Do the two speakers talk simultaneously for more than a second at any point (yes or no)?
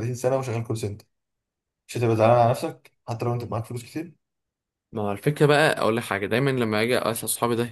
no